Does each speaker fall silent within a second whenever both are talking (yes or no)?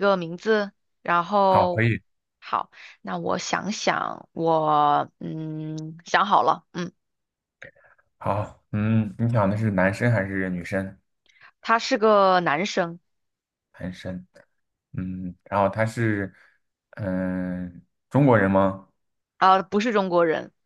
yes